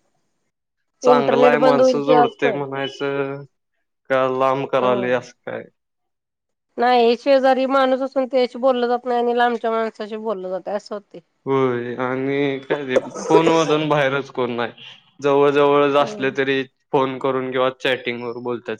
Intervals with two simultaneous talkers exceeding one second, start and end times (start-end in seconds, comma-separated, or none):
1.1-2.6